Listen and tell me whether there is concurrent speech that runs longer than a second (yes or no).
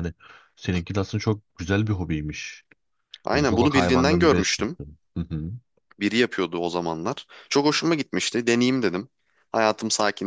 yes